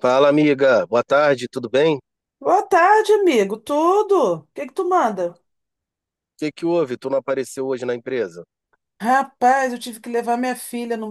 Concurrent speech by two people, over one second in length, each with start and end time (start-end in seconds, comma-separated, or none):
none